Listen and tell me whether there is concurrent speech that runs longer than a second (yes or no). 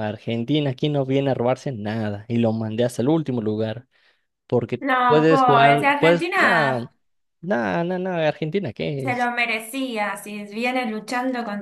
yes